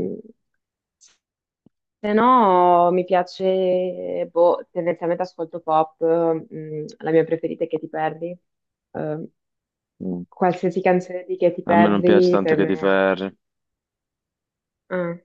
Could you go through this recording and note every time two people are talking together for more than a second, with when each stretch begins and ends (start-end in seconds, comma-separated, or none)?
11.7-12.9